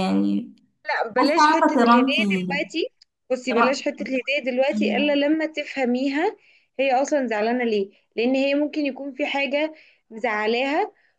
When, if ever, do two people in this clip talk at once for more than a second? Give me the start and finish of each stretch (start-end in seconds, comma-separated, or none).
1.2-2.6